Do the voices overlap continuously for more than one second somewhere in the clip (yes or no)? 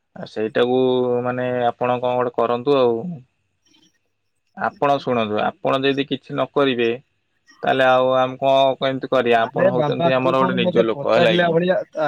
yes